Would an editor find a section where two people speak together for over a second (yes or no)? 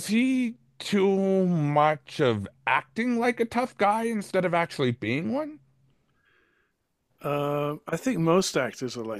no